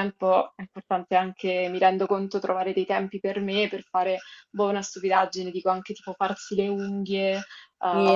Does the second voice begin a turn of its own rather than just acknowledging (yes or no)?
yes